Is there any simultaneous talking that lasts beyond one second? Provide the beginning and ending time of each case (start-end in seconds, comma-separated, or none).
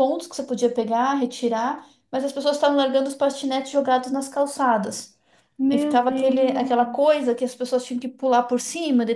5.7-7.3